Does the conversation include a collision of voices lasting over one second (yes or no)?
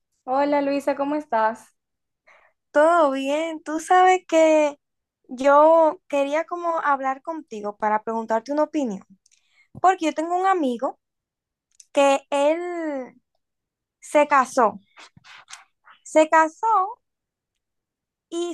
no